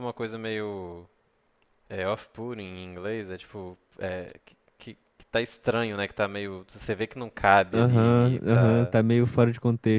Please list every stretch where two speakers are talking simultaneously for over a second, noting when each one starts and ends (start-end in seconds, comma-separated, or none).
7.7-8.9